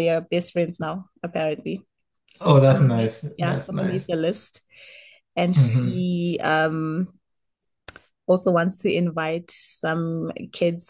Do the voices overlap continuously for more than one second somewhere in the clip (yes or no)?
yes